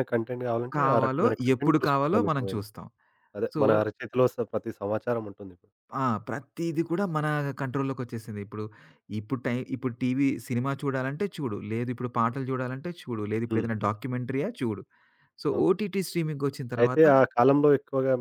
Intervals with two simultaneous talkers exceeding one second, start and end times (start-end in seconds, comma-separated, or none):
0.8-2.7